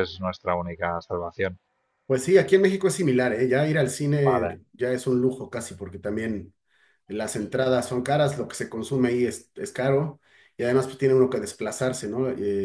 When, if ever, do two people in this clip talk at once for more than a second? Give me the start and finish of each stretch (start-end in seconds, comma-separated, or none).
none